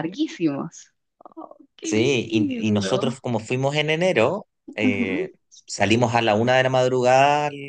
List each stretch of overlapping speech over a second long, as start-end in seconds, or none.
1.8-3.2